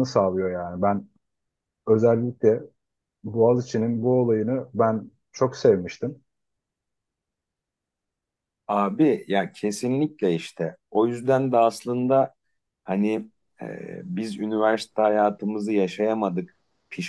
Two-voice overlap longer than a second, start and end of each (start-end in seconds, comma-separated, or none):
none